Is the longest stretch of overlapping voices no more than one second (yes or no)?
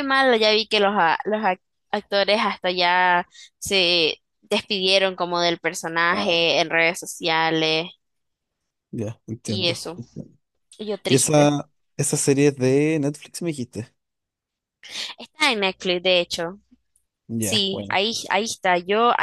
yes